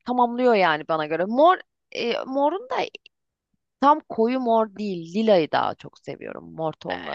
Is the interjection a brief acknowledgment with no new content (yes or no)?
no